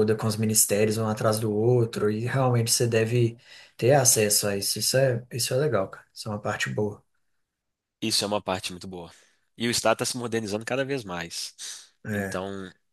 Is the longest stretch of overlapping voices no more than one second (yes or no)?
yes